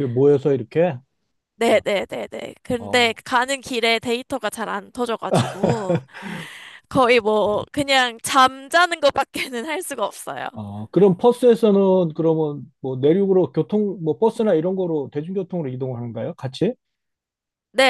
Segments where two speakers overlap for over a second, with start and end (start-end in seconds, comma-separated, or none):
none